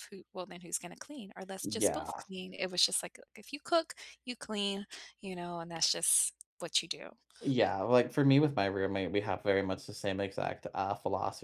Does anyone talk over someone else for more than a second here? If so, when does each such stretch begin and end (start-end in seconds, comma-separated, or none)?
none